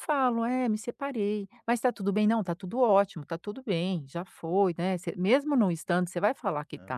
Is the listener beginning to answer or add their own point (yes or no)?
yes